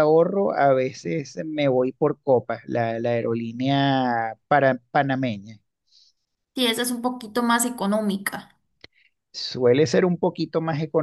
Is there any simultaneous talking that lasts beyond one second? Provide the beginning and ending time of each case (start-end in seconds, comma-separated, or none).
none